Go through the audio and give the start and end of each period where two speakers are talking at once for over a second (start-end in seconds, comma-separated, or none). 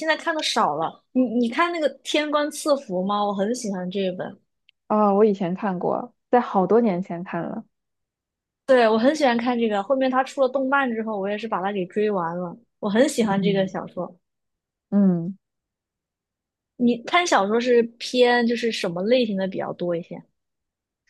none